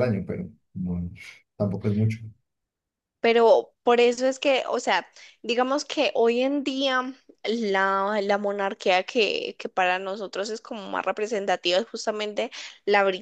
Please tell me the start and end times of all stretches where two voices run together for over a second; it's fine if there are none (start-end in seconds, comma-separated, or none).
none